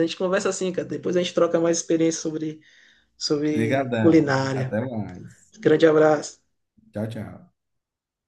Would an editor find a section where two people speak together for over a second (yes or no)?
yes